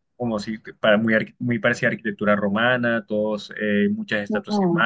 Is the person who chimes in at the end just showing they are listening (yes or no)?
yes